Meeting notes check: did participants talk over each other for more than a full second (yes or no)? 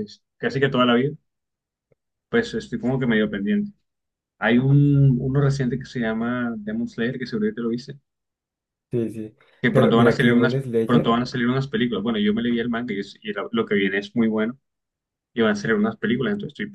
yes